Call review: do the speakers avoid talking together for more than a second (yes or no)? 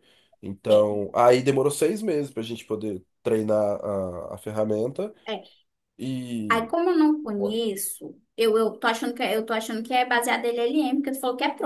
yes